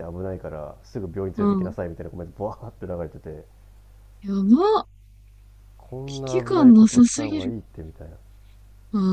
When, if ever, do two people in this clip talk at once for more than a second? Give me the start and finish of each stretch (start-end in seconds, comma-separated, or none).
6.1-7.5